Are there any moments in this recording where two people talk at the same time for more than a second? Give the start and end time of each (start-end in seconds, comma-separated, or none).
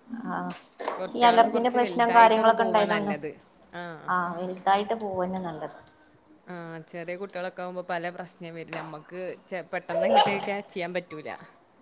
1.2-3.1